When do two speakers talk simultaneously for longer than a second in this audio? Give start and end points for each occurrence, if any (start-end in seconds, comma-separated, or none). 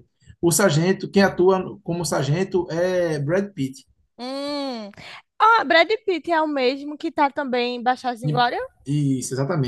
none